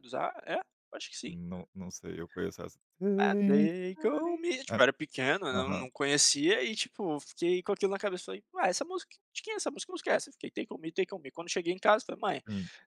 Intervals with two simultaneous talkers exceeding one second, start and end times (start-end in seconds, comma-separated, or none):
none